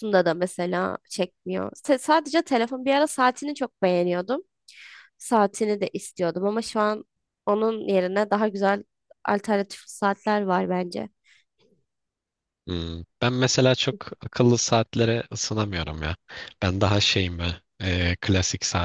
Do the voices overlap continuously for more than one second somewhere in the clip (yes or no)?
no